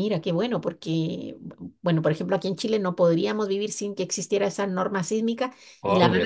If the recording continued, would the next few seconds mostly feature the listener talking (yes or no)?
no